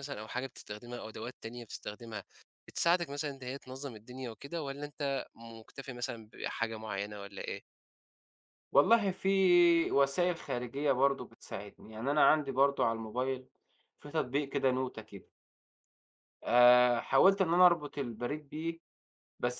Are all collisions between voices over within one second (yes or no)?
yes